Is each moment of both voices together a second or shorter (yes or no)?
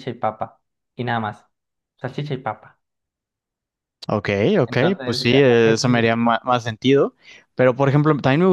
no